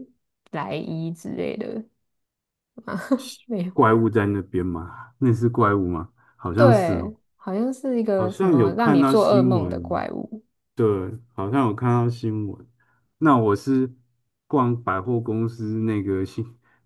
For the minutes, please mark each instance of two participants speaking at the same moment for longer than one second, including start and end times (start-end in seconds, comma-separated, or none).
8.2-10.0